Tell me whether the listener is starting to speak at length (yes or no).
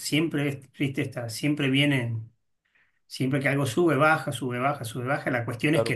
no